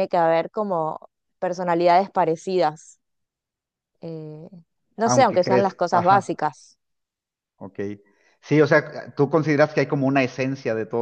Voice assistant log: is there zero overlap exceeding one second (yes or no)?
no